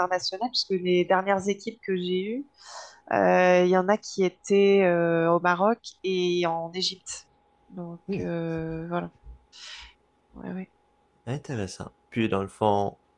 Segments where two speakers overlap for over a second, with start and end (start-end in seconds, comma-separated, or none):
none